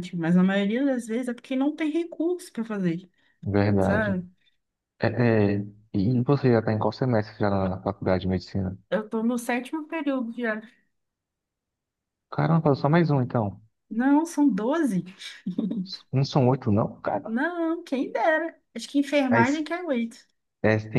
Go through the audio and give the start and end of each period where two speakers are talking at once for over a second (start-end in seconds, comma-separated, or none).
none